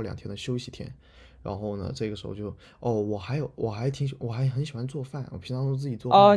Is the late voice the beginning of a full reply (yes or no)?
yes